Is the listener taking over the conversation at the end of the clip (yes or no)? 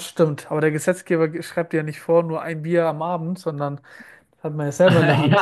yes